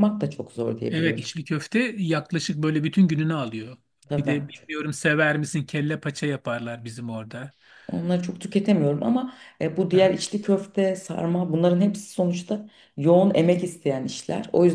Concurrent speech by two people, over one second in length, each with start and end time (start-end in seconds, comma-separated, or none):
none